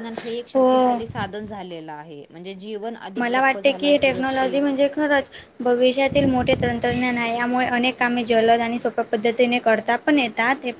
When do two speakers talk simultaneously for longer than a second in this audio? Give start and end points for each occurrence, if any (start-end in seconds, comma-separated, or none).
3.2-4.7